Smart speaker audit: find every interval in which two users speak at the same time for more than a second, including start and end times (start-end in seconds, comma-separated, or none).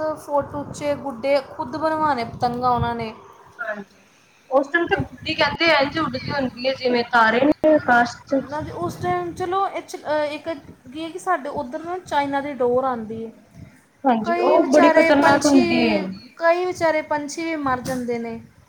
14.2-15.6